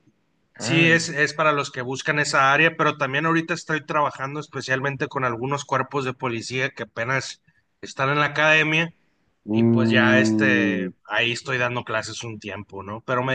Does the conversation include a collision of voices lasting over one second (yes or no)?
yes